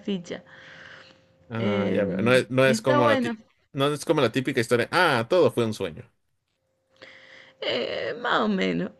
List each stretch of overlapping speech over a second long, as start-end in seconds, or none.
1.6-3.4